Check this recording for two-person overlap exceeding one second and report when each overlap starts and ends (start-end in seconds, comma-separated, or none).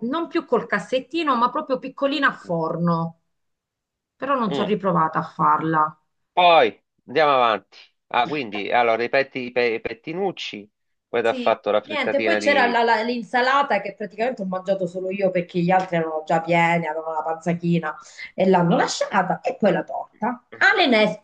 11.2-12.8